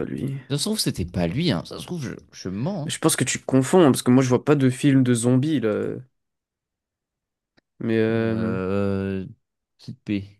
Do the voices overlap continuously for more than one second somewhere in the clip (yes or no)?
no